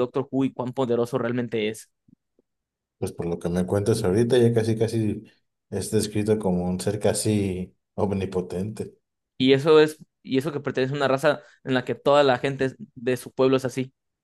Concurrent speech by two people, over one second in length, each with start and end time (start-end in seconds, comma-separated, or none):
none